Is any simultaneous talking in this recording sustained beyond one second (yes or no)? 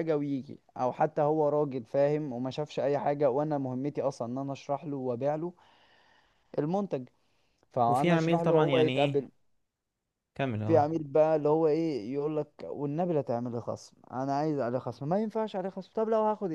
yes